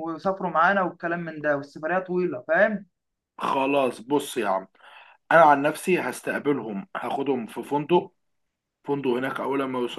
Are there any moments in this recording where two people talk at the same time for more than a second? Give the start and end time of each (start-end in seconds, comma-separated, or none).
none